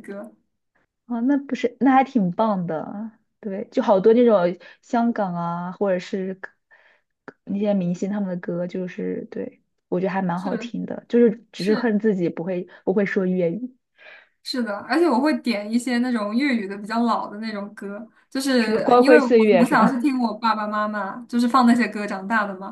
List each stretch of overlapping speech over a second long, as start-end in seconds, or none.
18.6-20.0